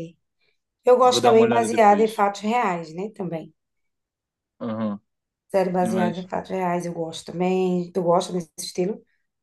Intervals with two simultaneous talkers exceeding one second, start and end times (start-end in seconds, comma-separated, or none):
1.0-2.2